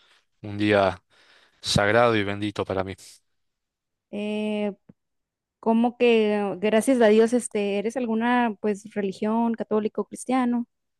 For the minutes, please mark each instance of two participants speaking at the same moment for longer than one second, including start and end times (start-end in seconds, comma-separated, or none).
none